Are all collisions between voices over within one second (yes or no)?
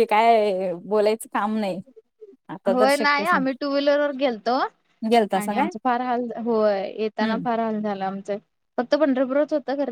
yes